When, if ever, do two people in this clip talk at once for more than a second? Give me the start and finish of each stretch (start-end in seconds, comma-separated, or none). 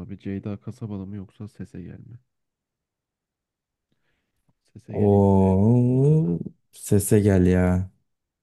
4.9-6.4